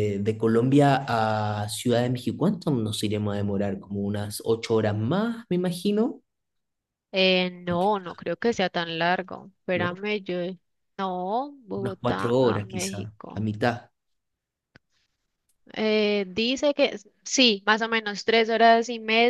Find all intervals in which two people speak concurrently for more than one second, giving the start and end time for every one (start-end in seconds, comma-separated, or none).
11.8-13.5